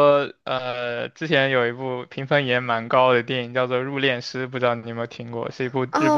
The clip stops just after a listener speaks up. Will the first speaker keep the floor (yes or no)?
no